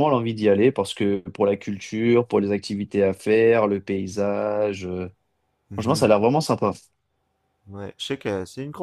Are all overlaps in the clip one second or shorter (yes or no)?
yes